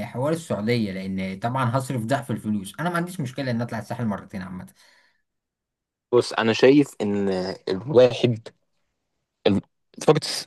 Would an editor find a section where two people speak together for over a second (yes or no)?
no